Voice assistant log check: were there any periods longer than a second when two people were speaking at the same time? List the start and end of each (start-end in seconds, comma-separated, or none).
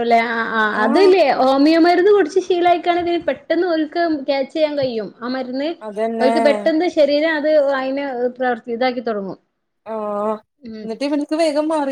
none